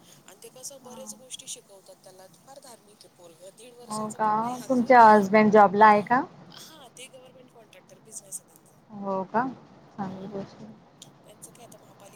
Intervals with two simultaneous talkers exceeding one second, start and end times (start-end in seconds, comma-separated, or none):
none